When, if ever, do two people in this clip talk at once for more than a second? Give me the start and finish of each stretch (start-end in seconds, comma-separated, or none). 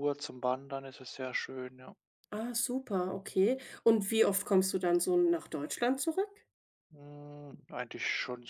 none